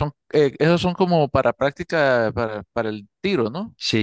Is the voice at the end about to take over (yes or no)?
yes